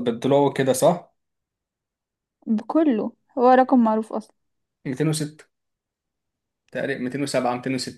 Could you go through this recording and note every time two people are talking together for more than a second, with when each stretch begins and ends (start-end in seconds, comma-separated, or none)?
none